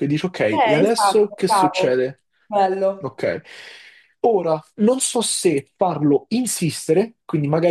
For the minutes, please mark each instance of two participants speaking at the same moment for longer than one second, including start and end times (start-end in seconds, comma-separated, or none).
0.5-2.1